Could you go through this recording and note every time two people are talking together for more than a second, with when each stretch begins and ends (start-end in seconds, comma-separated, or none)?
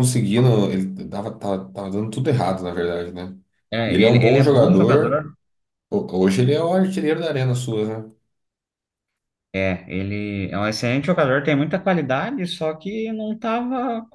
3.8-5.3